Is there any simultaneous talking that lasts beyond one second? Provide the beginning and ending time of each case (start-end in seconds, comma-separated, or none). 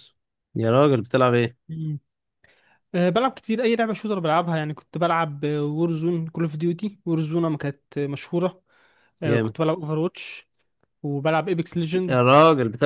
none